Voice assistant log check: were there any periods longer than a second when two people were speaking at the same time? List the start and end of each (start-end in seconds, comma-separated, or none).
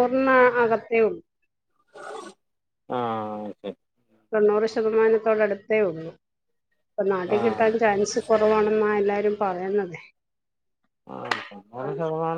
none